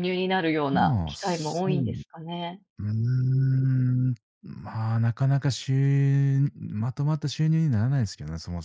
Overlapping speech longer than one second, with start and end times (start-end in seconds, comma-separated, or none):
0.7-2.0